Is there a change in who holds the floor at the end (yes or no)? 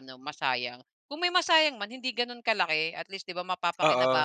yes